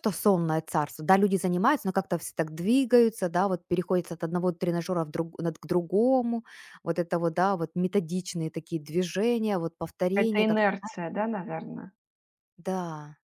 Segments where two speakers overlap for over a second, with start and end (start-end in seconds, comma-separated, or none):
none